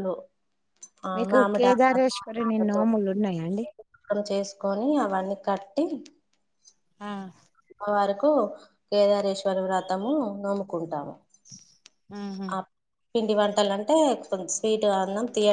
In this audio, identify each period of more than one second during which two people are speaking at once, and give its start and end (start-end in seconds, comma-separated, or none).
1.1-2.8